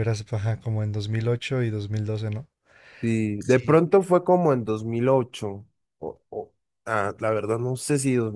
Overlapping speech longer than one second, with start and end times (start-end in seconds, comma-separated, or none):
none